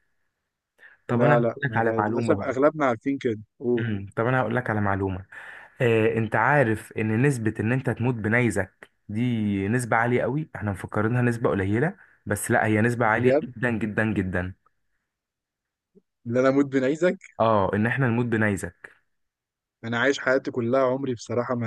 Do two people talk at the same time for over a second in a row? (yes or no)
yes